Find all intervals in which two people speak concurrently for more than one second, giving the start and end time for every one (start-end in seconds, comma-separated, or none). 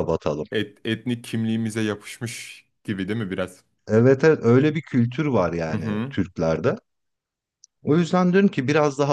none